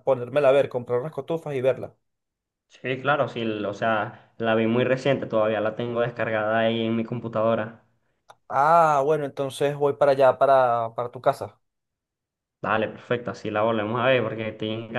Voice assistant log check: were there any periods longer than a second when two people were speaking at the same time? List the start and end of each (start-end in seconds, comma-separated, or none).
none